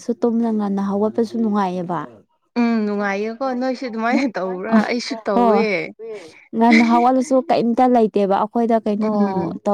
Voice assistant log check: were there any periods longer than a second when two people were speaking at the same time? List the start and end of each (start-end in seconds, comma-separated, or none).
none